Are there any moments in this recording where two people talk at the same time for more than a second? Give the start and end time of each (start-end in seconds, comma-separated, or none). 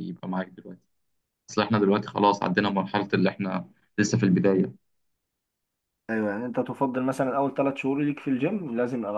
none